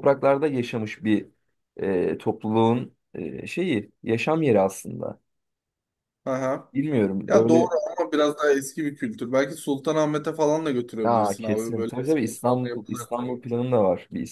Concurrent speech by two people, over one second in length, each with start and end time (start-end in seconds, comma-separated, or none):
11.0-13.2